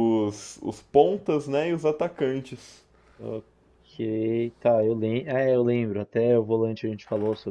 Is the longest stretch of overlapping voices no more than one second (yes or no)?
yes